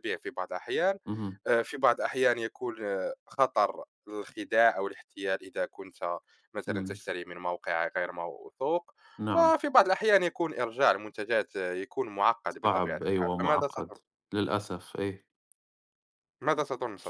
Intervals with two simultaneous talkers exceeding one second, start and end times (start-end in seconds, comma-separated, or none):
12.6-14.0